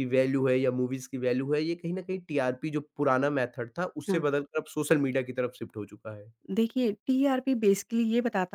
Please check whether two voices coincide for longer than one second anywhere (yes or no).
no